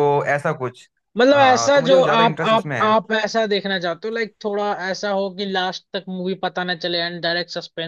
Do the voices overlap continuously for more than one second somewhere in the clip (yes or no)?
yes